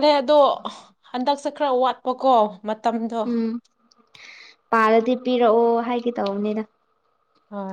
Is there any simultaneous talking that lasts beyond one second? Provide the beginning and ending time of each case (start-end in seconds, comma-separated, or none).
none